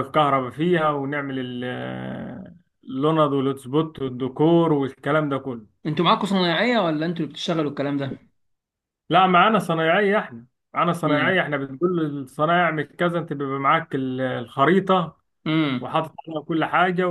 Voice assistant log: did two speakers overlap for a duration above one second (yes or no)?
no